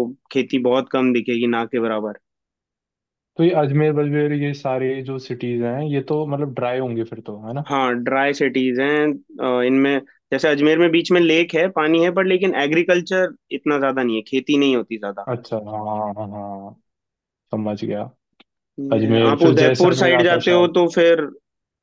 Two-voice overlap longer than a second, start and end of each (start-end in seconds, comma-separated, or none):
18.9-20.7